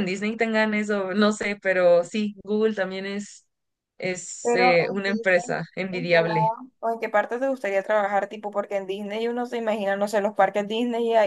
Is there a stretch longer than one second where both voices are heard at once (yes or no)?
yes